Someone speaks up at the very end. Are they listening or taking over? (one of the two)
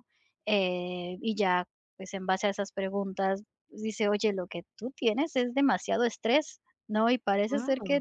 listening